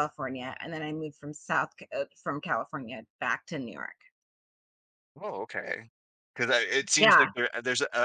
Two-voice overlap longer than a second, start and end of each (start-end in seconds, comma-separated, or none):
none